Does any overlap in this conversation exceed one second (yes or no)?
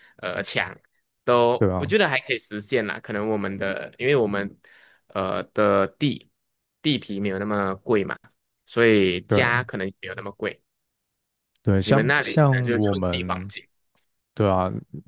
yes